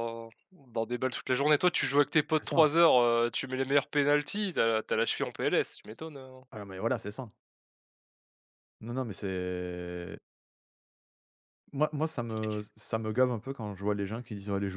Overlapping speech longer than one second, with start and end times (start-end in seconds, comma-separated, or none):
none